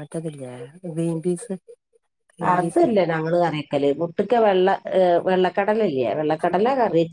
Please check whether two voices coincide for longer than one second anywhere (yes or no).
no